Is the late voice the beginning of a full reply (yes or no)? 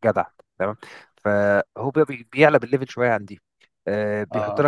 no